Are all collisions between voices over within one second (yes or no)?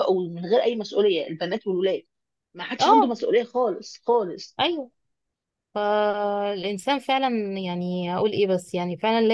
yes